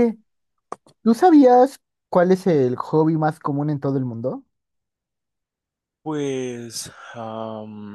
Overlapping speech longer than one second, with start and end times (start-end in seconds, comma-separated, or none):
none